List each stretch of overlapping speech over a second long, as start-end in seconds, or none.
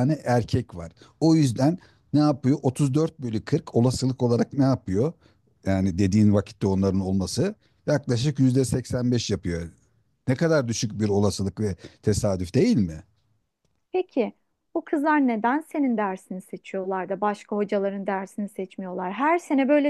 none